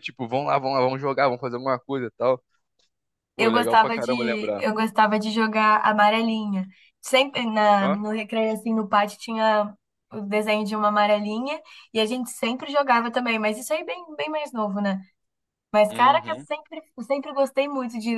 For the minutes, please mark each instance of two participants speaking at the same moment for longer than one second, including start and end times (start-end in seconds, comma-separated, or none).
3.4-4.7